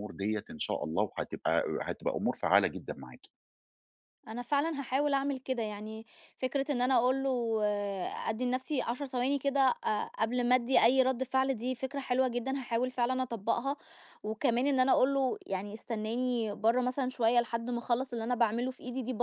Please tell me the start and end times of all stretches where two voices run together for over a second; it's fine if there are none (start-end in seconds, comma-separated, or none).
none